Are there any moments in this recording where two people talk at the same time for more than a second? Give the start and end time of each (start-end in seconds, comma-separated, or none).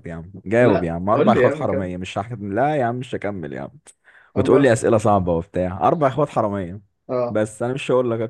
0.6-1.9